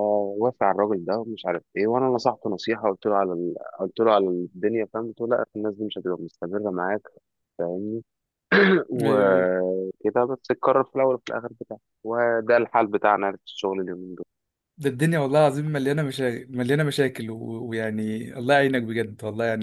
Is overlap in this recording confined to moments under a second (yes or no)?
yes